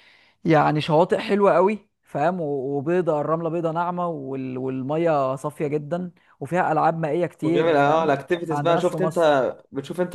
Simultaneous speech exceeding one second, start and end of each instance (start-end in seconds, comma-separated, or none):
7.4-9.2